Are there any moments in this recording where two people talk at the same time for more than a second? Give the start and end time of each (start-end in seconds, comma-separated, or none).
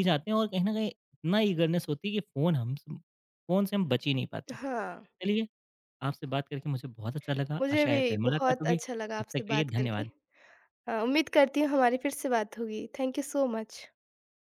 7.6-10.0